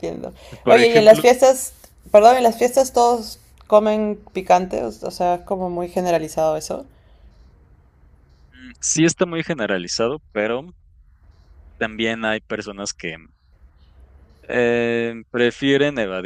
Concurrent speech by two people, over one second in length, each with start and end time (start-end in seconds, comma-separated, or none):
none